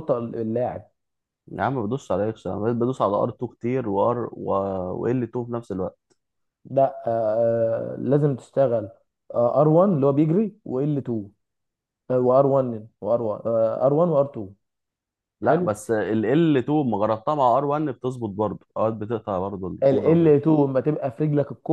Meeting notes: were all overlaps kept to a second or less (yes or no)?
yes